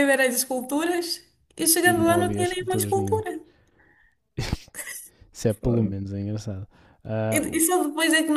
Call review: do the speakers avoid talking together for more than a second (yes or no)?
no